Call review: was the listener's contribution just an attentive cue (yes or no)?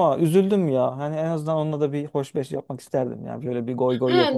no